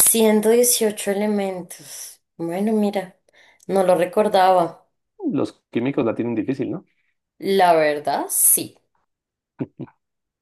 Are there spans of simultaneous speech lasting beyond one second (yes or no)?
no